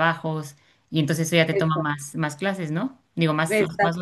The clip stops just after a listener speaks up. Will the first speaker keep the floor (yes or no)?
no